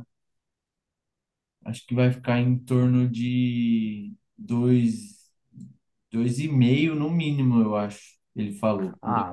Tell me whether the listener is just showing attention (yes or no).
no